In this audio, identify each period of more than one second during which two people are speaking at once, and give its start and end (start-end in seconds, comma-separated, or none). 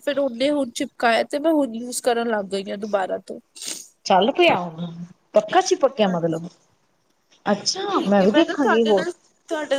none